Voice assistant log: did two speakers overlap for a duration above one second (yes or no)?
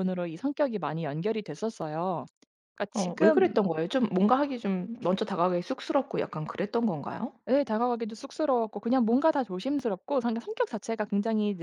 no